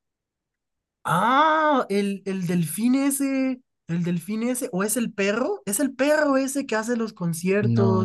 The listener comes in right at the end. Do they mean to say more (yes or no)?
yes